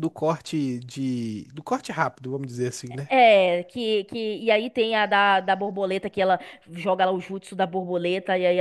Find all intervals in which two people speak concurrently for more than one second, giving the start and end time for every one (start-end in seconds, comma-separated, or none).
none